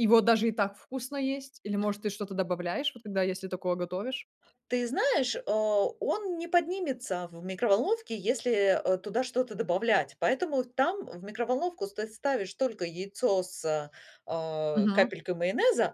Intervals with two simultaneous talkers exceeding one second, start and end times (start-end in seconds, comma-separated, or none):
none